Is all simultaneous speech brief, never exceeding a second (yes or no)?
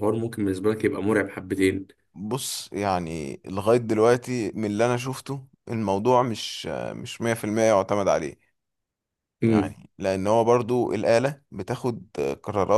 yes